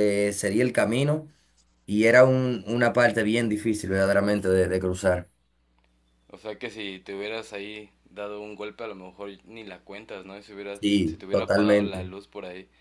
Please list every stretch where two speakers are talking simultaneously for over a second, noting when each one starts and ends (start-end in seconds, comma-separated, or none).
10.8-12.1